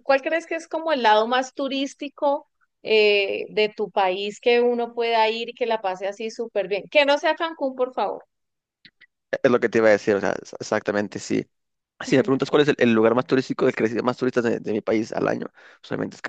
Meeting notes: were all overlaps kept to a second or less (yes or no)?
yes